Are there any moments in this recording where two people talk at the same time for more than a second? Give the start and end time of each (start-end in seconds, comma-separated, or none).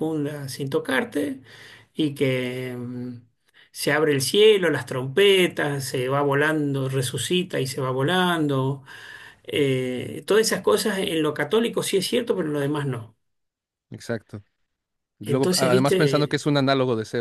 15.2-16.4